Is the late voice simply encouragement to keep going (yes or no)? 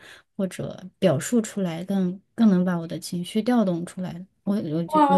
no